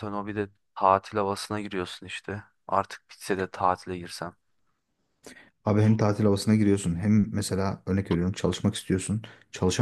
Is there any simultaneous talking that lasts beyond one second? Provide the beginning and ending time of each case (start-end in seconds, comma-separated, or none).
none